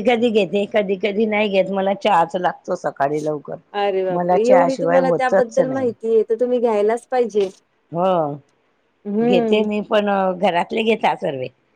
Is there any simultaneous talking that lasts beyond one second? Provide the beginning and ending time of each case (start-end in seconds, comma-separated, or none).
4.1-5.9